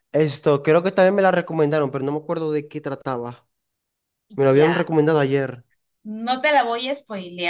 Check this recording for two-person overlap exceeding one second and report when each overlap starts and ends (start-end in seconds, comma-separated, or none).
none